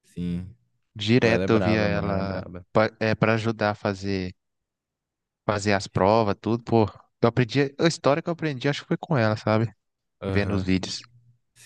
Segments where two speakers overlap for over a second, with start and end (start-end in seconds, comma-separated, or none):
1.2-2.7